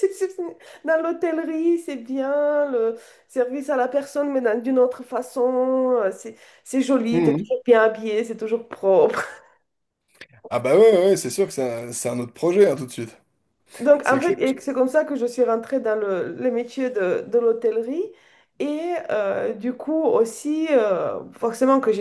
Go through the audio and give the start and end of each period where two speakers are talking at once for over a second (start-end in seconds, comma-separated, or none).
none